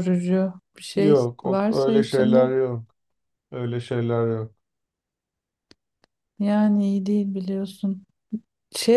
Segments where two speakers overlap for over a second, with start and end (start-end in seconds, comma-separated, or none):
0.9-2.5